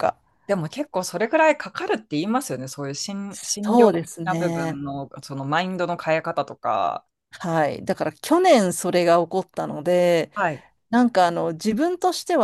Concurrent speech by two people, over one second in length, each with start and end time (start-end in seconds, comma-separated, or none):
3.3-4.8